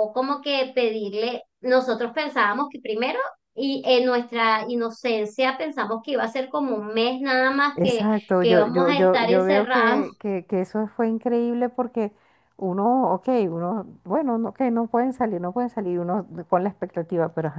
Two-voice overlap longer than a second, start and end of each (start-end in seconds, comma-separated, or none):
7.8-10.1